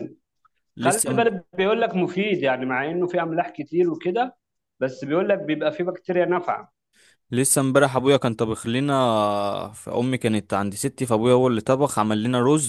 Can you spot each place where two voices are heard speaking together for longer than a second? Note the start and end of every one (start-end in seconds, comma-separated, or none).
none